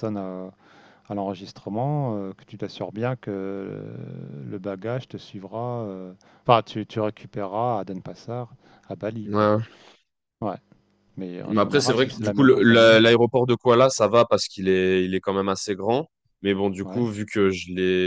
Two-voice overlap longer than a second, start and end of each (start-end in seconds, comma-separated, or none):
11.5-13.1